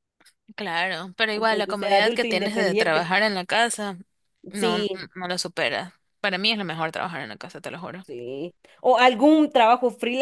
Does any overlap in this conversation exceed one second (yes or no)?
yes